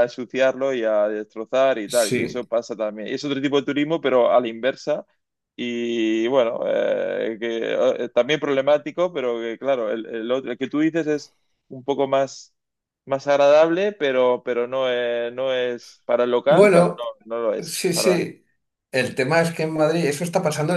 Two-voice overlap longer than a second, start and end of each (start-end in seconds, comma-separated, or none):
none